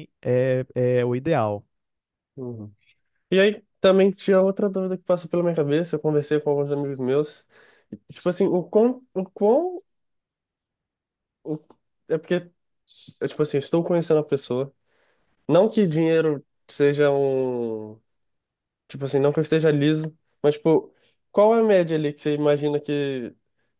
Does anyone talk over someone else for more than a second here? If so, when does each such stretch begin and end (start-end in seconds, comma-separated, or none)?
none